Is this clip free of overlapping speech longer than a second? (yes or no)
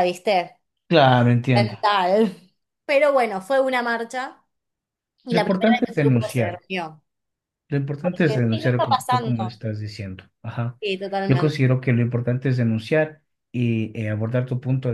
no